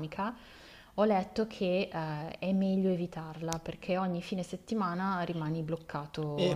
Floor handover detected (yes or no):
yes